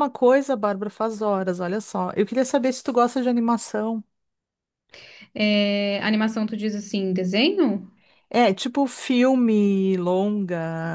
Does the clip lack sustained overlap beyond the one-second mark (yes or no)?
yes